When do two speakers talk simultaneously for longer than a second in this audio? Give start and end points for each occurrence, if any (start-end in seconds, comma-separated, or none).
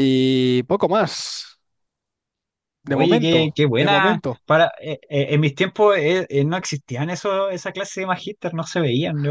2.9-4.4